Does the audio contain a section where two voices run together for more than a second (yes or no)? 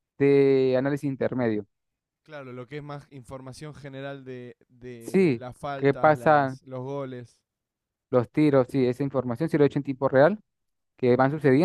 yes